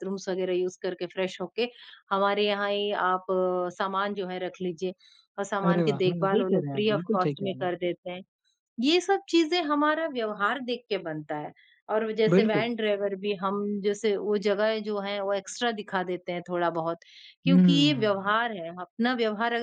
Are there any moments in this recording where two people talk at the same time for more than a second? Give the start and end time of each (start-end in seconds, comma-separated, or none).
5.7-7.7